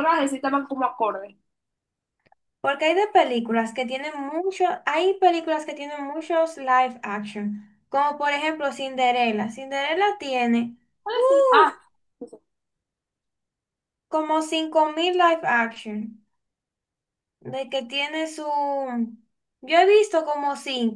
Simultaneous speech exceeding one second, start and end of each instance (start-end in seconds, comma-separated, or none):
none